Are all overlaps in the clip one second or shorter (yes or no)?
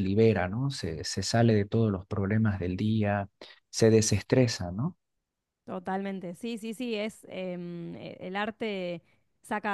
yes